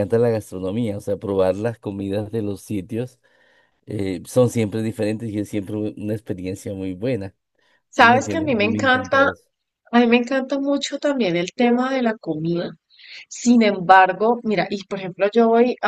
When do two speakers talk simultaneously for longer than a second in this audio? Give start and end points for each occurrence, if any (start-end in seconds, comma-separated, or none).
8.0-9.2